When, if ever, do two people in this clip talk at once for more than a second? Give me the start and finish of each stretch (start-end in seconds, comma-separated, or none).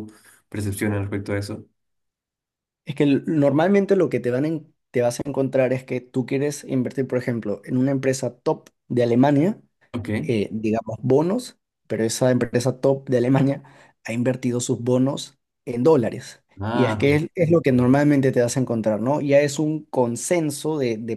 16.6-17.9